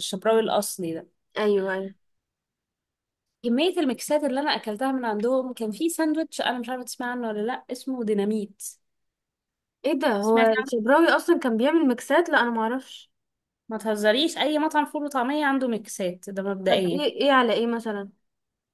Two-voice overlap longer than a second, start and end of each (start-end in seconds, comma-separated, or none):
none